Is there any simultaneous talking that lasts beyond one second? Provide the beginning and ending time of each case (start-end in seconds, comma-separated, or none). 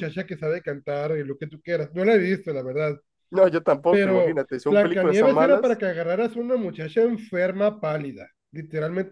3.9-5.8